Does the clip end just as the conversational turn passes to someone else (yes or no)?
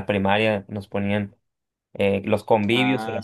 no